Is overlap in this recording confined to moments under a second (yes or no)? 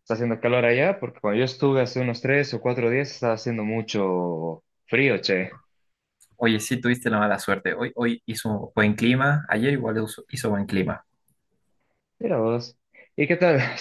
yes